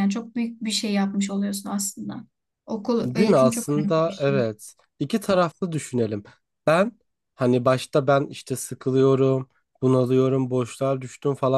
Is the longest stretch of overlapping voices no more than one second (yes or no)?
no